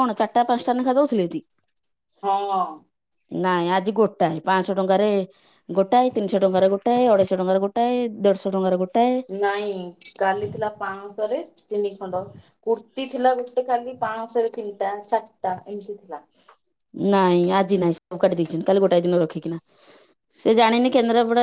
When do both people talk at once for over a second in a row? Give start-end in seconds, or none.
none